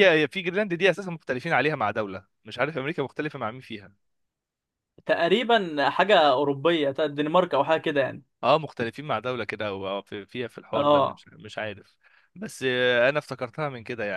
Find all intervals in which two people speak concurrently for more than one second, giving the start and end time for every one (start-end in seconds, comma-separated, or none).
none